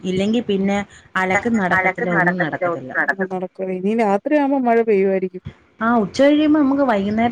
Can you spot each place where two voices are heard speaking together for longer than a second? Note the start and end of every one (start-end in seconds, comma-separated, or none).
none